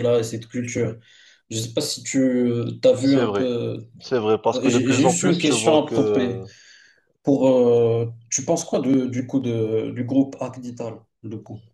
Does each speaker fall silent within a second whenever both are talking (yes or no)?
no